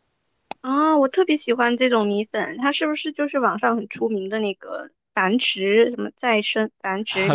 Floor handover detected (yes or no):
yes